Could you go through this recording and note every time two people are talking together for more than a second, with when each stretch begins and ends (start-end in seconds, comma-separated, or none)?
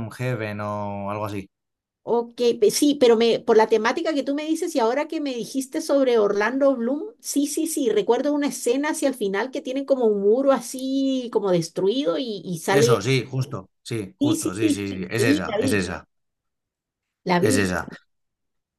14.2-15.9